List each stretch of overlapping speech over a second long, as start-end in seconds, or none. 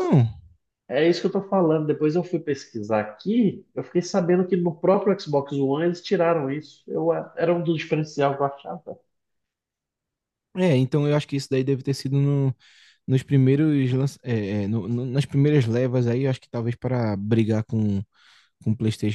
none